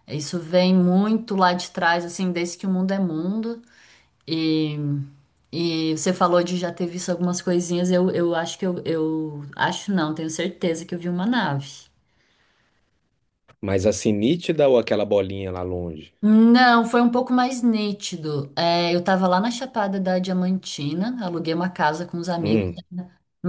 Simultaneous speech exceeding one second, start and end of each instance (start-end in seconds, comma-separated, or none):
none